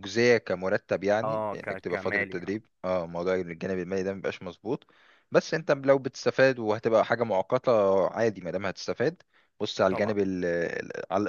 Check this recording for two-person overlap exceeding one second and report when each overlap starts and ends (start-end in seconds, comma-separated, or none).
1.2-2.5